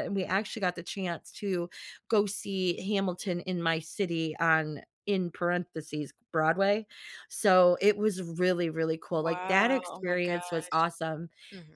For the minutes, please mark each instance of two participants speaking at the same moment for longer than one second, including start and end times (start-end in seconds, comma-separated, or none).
9.1-10.4